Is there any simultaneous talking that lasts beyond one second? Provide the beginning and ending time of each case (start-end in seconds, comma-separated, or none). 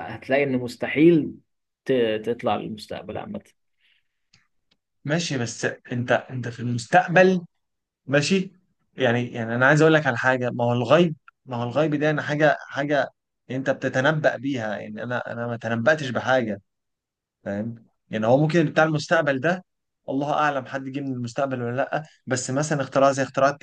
none